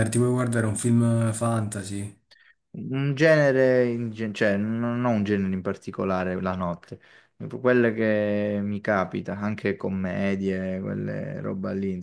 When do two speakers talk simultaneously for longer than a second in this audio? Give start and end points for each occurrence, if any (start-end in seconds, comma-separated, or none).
none